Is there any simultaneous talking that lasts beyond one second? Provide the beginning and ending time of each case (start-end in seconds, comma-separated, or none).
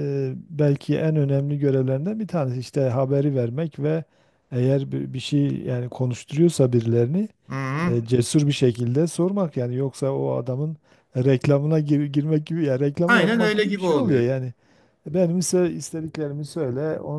13.1-14.3